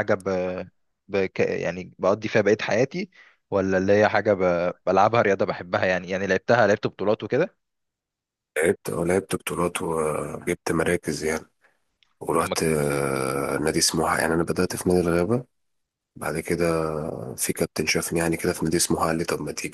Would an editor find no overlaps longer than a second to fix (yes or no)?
yes